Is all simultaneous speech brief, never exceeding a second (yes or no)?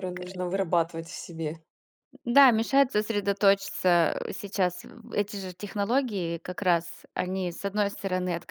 yes